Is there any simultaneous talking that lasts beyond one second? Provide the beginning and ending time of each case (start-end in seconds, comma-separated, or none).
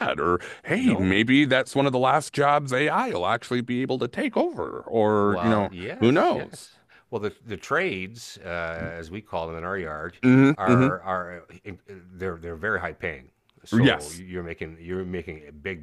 5.2-6.7